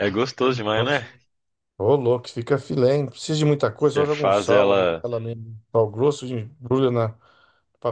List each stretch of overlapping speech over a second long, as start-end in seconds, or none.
3.7-5.0